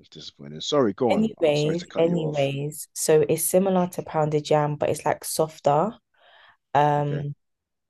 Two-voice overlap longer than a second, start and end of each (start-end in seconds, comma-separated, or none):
1.1-2.5